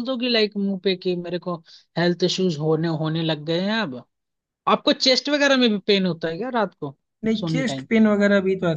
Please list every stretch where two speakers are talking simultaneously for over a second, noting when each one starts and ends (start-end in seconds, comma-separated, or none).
none